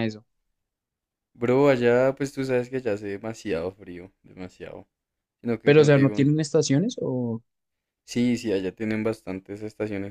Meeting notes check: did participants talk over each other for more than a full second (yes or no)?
no